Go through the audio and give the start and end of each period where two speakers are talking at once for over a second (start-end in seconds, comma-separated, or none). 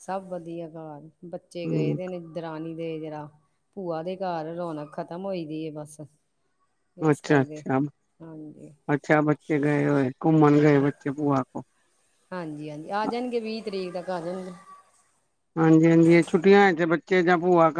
none